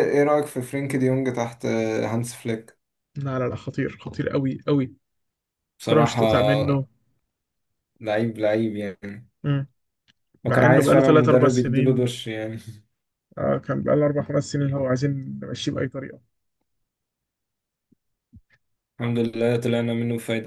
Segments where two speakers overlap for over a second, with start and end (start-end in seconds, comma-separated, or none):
10.5-12.2